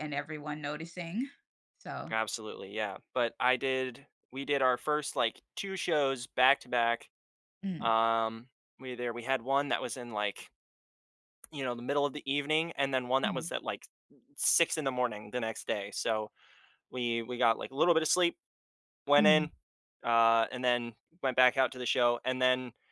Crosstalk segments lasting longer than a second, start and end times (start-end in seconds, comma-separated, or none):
none